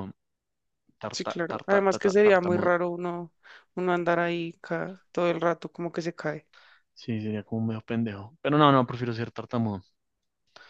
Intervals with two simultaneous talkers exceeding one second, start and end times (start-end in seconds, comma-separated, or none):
1.1-2.7